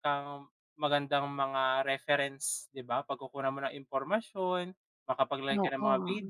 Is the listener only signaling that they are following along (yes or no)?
yes